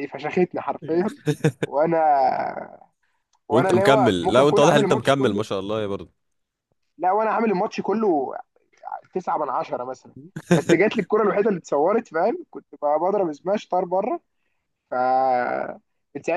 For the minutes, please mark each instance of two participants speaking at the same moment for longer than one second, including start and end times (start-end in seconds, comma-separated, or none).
3.5-5.5